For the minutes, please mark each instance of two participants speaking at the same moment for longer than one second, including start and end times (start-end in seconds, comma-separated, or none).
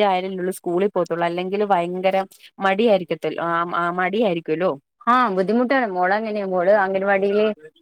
none